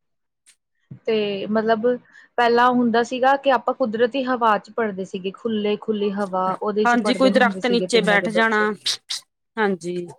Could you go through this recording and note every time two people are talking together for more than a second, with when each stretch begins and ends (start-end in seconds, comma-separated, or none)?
6.8-8.6